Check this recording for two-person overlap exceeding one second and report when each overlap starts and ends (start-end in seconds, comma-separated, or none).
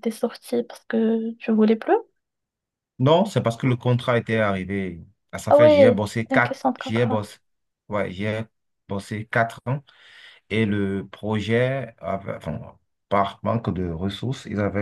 5.5-7.3